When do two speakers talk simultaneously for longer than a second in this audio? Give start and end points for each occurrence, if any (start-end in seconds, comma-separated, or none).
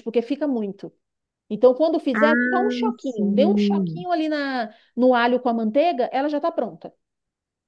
2.1-4.1